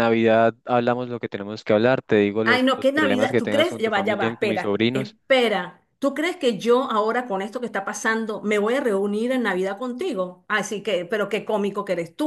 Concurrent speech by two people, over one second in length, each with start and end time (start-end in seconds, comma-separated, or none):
2.4-5.2